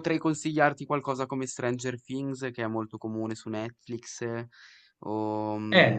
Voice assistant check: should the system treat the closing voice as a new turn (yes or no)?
yes